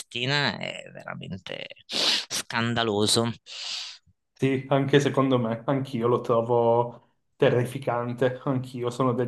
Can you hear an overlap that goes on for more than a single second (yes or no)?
no